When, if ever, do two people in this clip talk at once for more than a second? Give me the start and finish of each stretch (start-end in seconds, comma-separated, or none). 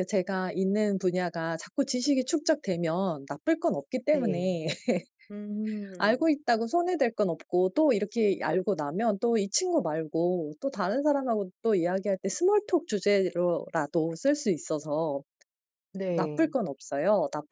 none